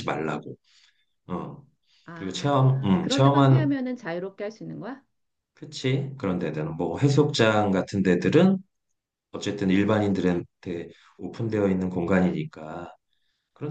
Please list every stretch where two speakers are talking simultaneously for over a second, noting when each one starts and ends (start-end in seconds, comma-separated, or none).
2.1-3.7